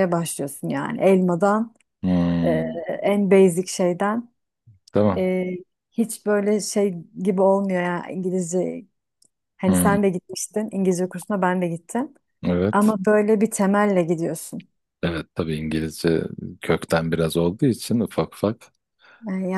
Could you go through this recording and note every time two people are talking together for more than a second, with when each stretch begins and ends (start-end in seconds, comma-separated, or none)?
none